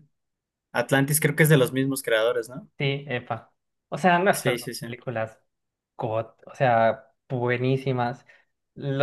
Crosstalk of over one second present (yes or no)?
no